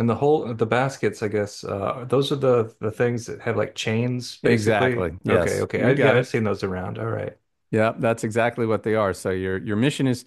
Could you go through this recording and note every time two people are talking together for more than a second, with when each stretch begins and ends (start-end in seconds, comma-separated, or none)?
4.4-6.3